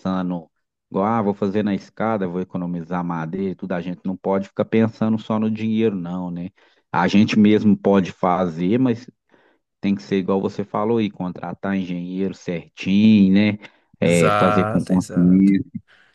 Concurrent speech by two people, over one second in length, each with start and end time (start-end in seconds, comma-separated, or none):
14.0-15.5